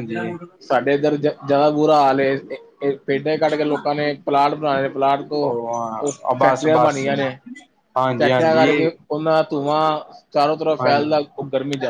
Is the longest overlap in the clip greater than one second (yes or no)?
yes